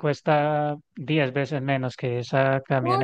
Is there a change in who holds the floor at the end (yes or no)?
yes